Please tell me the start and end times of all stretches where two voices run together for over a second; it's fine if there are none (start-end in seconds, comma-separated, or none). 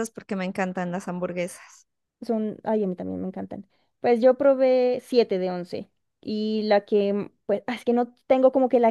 none